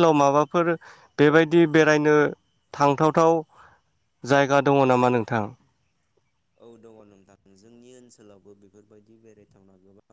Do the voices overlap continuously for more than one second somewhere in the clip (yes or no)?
no